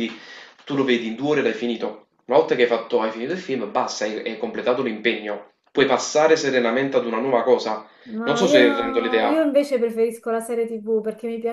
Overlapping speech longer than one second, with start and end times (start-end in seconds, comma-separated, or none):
8.2-9.4